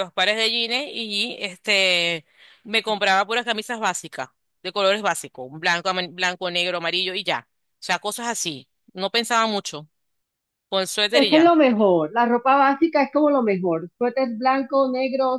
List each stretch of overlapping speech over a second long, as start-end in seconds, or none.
none